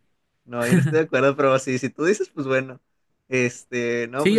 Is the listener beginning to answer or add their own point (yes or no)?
yes